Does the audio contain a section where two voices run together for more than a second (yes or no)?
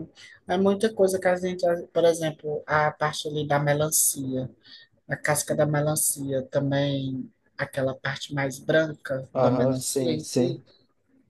yes